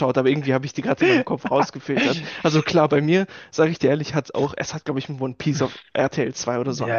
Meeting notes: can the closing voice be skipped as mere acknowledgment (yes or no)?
no